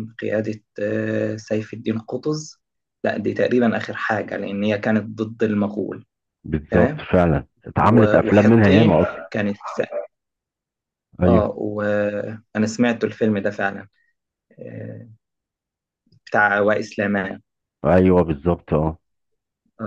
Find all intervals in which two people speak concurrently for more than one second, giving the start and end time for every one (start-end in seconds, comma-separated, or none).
7.8-9.2